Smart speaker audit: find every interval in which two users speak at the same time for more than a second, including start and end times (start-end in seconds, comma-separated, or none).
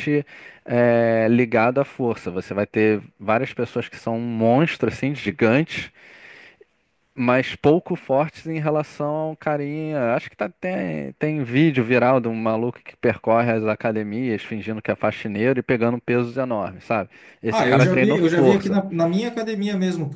17.5-18.8